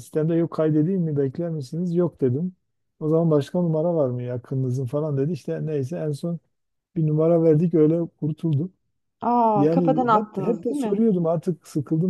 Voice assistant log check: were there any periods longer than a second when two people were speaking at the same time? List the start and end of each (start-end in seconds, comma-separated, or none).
9.6-11.0